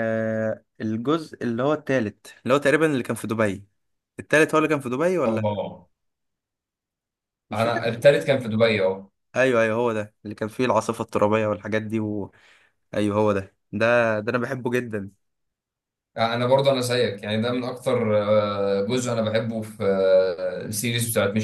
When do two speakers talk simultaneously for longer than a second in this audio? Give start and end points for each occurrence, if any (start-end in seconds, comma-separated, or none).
none